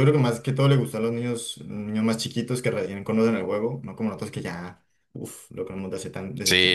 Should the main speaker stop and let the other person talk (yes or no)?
yes